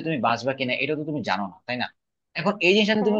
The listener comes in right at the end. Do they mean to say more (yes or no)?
no